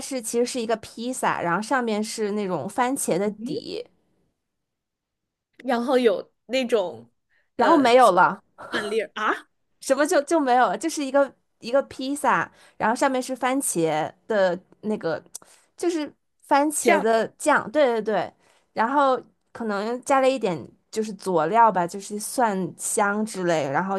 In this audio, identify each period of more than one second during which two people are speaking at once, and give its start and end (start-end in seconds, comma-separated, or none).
none